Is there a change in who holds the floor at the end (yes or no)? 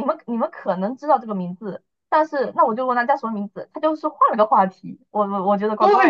yes